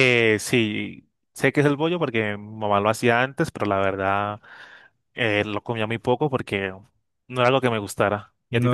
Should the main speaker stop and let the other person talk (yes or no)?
yes